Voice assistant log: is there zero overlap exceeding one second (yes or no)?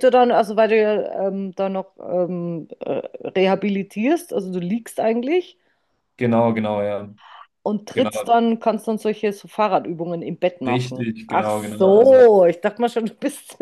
no